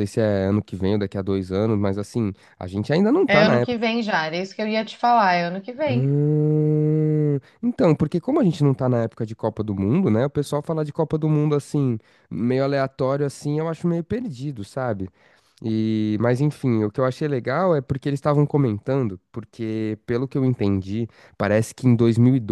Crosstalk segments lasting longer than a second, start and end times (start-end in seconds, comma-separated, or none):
none